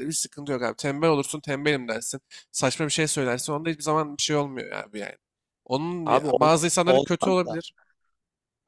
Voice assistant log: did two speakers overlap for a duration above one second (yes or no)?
yes